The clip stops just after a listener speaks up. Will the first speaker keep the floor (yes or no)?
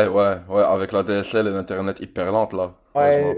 no